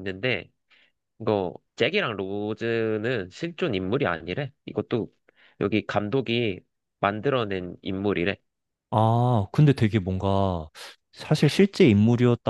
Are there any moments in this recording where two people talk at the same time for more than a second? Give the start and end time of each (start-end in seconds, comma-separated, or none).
none